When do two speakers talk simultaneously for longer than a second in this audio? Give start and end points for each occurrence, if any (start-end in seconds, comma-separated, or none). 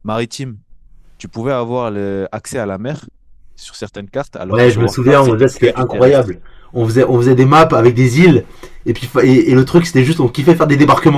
4.5-6.3